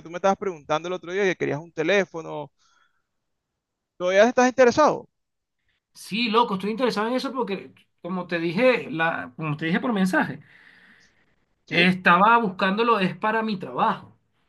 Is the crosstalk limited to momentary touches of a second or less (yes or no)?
yes